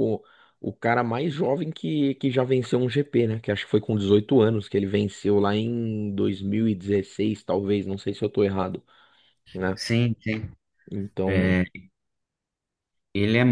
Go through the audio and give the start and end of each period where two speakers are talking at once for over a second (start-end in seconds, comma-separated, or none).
none